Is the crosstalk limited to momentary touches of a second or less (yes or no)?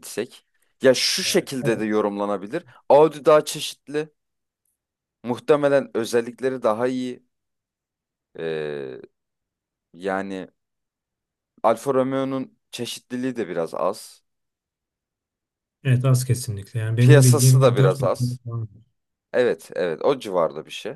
no